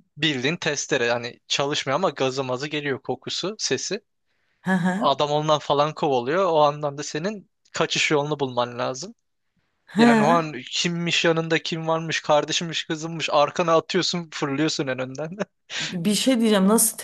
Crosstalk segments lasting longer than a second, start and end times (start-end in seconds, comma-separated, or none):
none